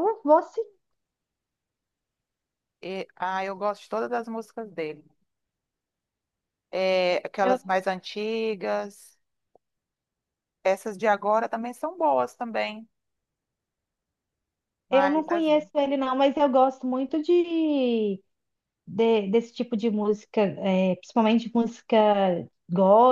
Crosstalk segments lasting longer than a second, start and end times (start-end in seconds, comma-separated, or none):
none